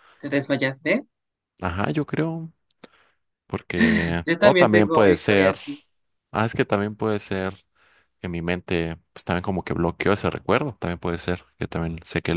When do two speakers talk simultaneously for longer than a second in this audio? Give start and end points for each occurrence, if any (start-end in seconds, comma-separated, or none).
4.2-5.6